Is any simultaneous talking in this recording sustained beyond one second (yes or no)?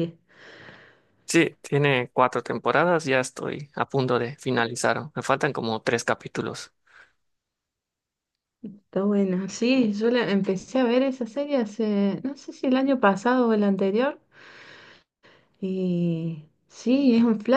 no